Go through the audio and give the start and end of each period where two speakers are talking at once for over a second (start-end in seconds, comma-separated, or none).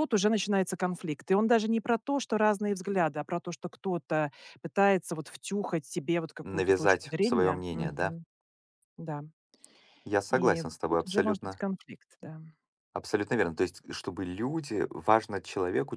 6.4-8.1, 10.3-11.6